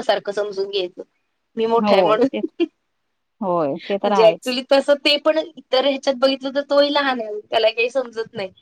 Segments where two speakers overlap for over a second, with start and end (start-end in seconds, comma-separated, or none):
none